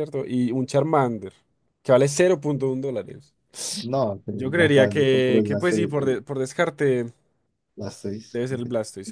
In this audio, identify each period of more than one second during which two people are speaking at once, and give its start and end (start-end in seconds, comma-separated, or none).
4.3-6.2